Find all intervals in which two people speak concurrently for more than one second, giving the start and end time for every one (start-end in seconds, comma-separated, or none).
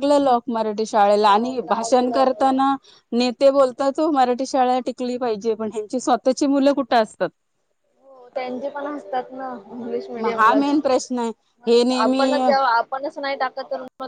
1.2-2.5